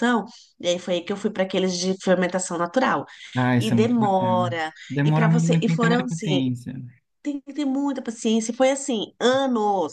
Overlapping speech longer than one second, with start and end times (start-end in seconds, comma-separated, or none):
3.6-6.4